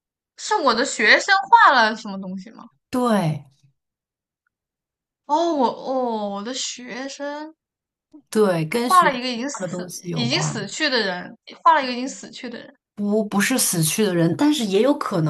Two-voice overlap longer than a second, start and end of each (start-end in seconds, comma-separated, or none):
8.7-10.7